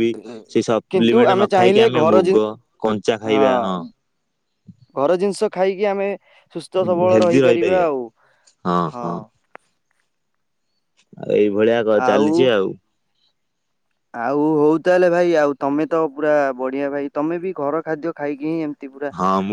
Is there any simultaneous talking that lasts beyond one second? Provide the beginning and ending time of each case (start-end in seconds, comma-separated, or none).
0.5-2.3